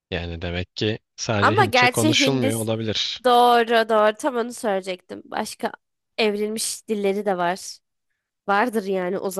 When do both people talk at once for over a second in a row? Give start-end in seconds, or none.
1.4-2.7